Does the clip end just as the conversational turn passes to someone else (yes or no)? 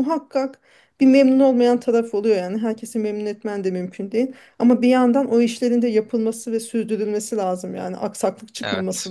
no